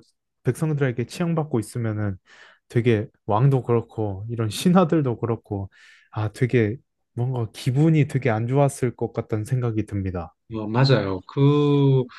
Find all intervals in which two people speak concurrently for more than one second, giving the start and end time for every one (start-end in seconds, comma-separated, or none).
none